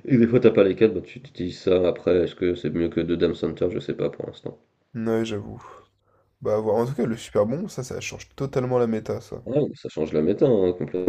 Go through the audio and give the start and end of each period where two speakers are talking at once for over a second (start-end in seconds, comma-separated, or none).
none